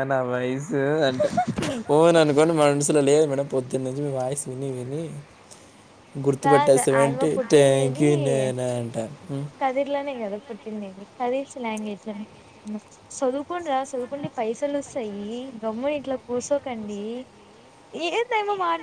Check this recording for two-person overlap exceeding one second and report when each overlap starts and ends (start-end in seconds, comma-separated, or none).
6.5-8.4